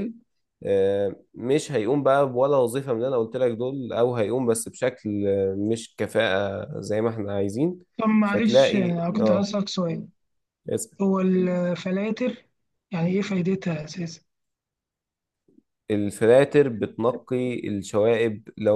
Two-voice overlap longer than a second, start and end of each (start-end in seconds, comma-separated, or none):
8.2-9.5